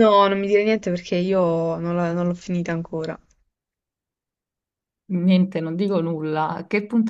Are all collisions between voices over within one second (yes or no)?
yes